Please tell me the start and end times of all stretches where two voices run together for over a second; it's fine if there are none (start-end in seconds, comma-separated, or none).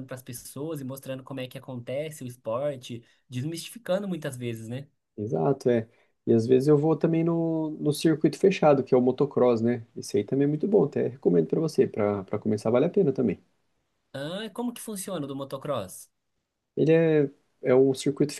none